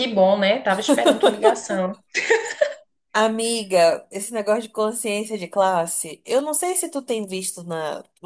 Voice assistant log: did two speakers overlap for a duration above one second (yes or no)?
no